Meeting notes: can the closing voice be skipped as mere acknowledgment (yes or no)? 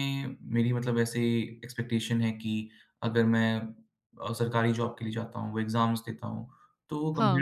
yes